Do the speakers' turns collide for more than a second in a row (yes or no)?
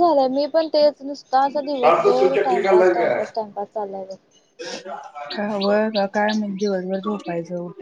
yes